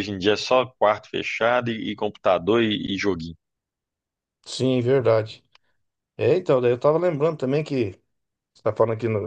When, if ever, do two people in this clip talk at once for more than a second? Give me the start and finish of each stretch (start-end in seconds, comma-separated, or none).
none